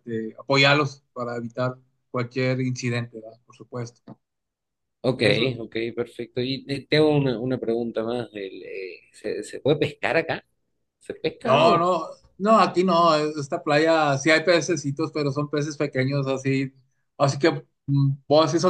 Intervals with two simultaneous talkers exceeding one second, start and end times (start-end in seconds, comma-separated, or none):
none